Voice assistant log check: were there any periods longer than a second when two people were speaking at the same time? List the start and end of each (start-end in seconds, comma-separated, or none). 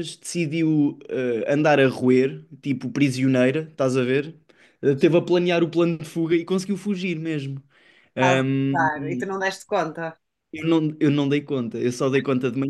none